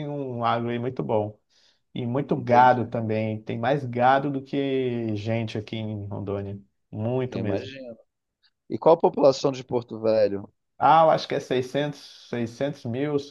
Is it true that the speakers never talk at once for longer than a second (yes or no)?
yes